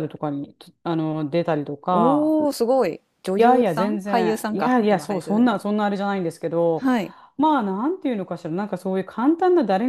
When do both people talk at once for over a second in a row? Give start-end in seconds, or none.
3.4-5.6